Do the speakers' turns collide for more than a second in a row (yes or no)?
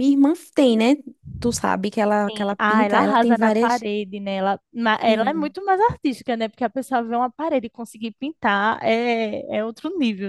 yes